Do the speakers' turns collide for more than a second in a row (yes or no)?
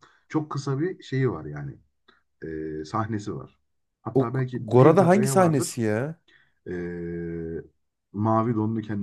yes